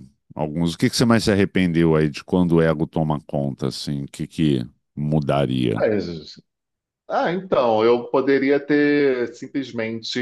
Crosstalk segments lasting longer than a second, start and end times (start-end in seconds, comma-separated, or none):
none